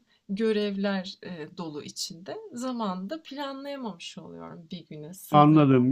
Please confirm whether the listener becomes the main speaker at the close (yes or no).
yes